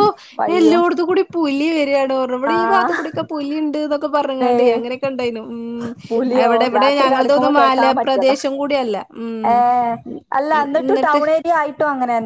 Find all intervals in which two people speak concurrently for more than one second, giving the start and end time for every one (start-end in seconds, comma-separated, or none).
6.5-8.4